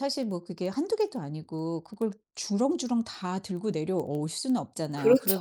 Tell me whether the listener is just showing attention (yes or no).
yes